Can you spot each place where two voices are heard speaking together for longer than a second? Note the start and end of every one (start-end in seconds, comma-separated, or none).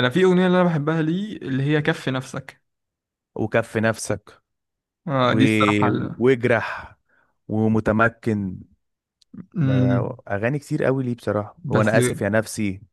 none